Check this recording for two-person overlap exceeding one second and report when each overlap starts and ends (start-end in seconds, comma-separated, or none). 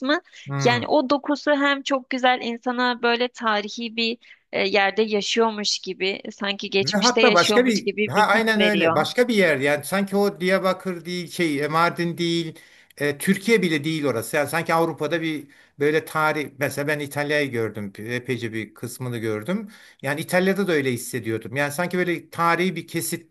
6.8-9.1